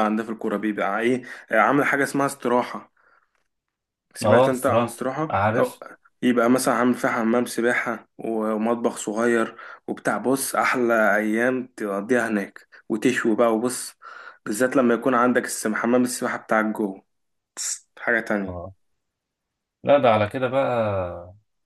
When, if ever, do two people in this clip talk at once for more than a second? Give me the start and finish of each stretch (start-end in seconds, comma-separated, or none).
4.2-5.8